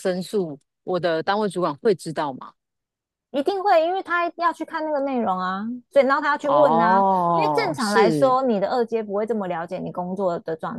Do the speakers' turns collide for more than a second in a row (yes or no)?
yes